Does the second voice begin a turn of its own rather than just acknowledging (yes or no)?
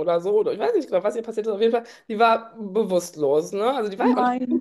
no